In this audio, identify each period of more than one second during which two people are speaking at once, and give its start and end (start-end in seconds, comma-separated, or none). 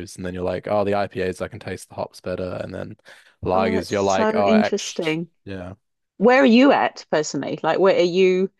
3.5-5.3